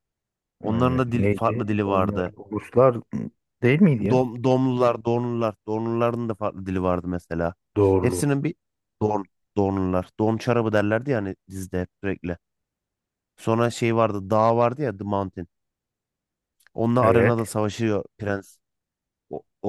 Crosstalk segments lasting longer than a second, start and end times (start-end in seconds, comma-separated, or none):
0.6-2.3